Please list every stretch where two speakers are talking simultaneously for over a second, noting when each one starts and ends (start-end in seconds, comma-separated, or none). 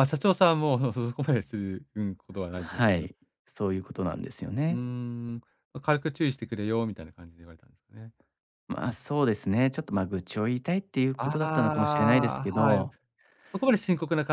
11.2-12.8